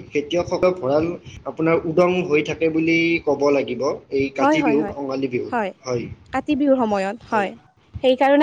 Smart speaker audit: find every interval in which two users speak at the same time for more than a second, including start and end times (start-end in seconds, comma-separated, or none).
none